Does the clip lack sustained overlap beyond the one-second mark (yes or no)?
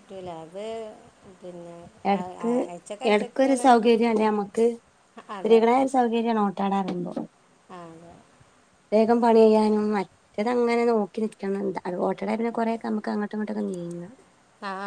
yes